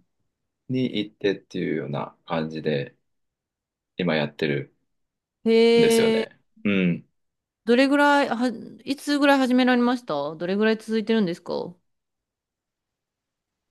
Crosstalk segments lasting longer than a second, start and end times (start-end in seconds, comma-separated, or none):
none